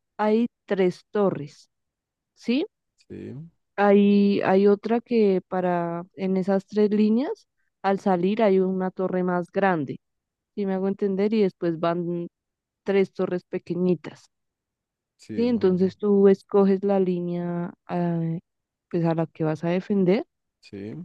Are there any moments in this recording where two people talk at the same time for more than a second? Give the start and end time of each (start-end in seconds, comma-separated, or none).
none